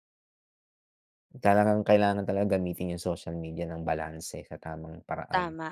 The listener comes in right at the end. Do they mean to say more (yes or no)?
yes